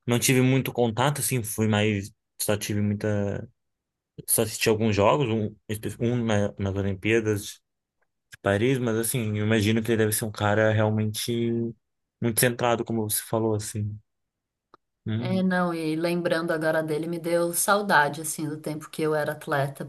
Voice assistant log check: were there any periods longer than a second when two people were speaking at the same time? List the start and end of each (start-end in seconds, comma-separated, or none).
none